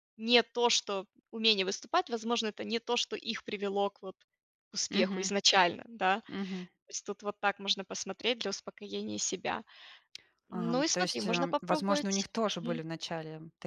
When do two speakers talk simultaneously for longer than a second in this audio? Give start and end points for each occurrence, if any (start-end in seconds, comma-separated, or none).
10.5-12.8